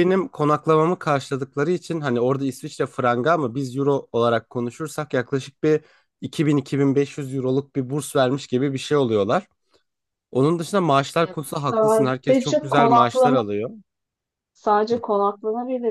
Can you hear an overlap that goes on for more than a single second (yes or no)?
yes